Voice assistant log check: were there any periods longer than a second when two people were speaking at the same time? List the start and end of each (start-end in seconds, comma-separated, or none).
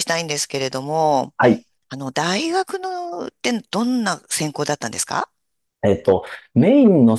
none